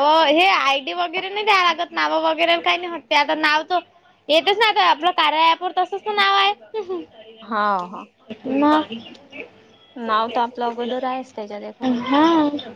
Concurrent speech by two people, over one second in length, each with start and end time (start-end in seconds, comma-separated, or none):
10.6-12.1